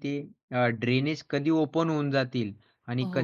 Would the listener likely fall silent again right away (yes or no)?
yes